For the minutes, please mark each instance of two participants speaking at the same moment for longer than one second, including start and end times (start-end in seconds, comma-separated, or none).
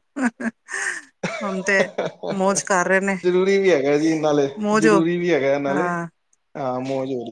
none